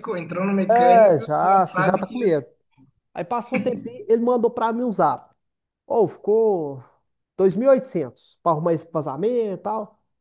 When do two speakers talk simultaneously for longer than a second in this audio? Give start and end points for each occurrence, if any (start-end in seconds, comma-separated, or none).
0.8-2.4